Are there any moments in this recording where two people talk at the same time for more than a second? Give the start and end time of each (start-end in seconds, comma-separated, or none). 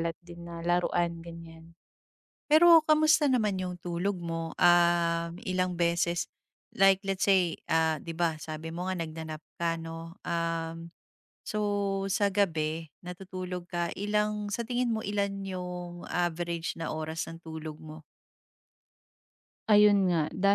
none